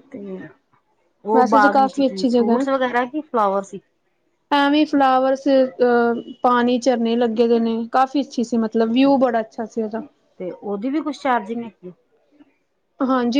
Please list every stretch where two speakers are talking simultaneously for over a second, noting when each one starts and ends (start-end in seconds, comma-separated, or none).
1.4-2.7